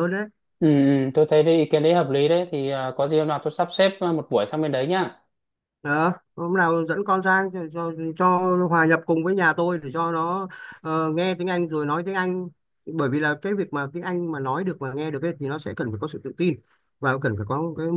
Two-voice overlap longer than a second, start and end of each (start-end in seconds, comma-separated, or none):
none